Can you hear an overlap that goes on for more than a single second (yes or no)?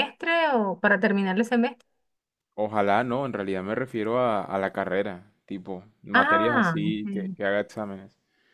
yes